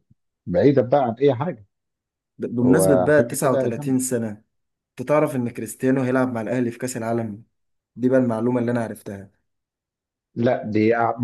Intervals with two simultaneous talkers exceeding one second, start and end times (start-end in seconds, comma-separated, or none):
2.6-4.0